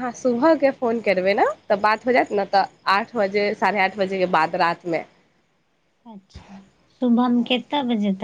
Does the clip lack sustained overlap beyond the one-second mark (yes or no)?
yes